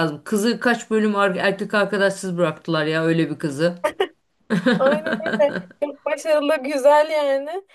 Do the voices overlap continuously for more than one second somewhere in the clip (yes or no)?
no